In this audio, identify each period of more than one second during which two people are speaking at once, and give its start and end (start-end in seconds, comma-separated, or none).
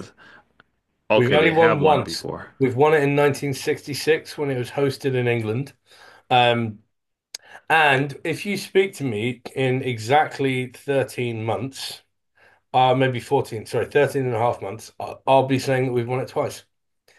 1.1-2.5